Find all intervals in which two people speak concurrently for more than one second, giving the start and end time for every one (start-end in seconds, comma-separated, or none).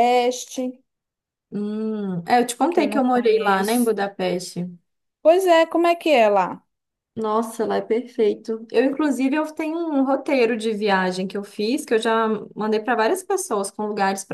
2.7-3.9